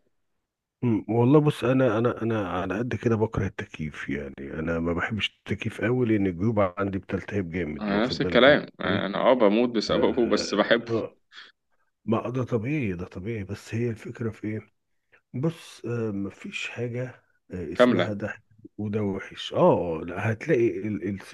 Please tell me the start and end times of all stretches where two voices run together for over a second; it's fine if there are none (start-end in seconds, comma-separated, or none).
7.8-9.1